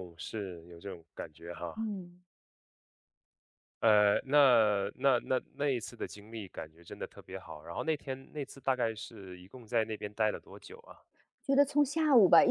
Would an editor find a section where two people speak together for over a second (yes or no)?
no